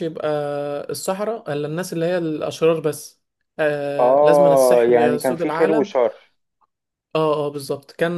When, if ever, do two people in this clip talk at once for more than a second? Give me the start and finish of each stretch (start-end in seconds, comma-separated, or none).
4.0-5.9